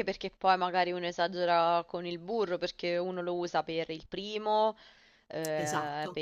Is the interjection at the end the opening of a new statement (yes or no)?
no